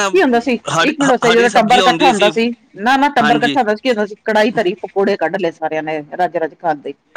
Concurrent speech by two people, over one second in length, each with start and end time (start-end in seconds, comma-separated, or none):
0.8-2.1